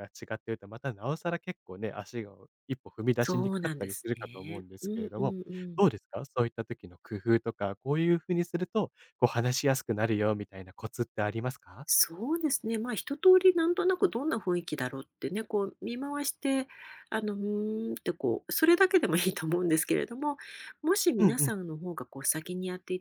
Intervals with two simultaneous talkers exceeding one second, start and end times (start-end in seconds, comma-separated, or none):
3.2-5.3